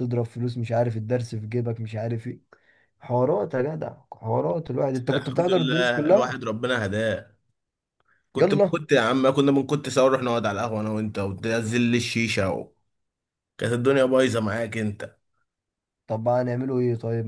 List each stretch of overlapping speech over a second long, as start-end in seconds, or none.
4.9-6.4